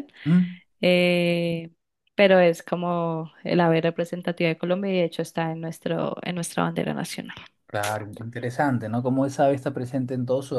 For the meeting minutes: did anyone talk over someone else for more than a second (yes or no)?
no